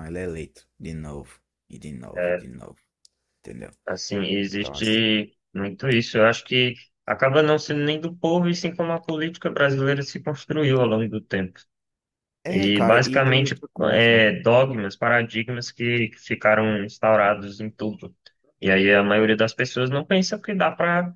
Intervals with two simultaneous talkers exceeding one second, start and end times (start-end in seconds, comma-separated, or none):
12.5-14.2